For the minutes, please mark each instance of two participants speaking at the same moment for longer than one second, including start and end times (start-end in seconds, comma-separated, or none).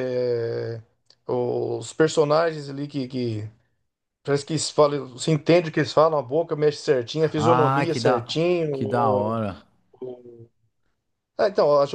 7.4-9.4